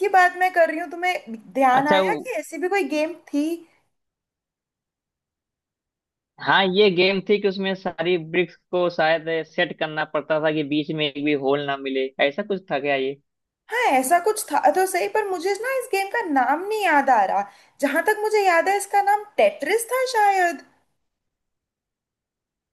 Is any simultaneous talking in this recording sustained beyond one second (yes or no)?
no